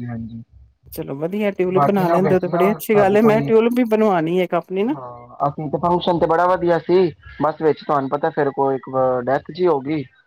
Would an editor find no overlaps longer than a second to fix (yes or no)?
no